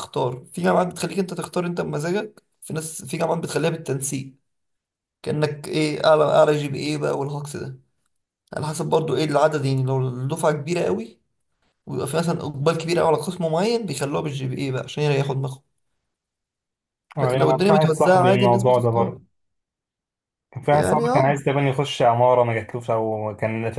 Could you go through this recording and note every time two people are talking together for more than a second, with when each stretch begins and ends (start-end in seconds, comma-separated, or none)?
17.2-19.2